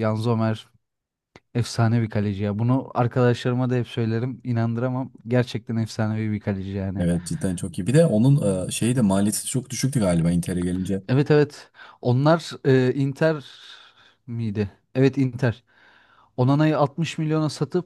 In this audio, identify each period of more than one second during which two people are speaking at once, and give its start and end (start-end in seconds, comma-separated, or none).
none